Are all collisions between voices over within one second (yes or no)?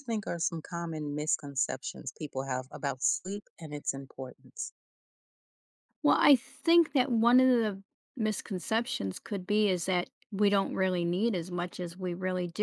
yes